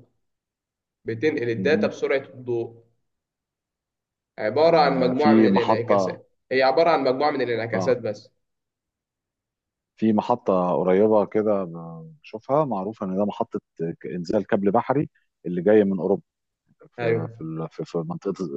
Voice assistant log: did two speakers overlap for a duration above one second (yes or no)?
yes